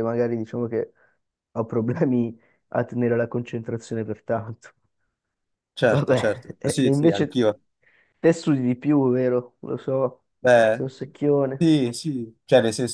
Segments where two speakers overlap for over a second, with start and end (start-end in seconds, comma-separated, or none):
5.9-7.4